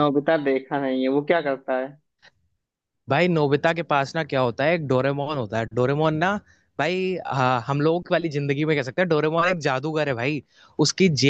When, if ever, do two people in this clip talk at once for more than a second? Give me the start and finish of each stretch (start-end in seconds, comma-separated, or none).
none